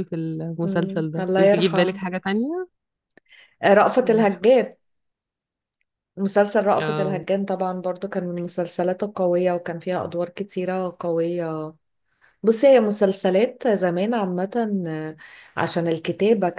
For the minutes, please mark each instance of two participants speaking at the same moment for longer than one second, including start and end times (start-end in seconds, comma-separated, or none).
0.6-2.0